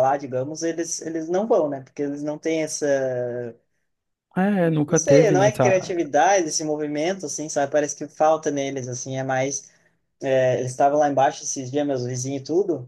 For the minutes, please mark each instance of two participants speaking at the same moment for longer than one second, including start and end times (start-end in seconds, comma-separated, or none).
4.9-6.1